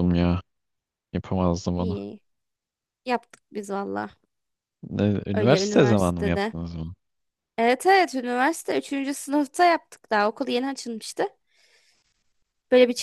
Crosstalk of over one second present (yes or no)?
yes